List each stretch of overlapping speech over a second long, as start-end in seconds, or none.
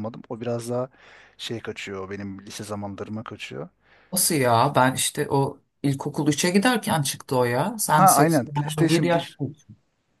7.9-9.4